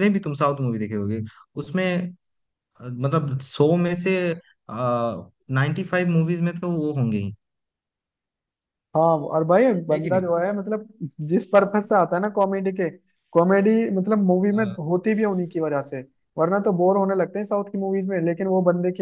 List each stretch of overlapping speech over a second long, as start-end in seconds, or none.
none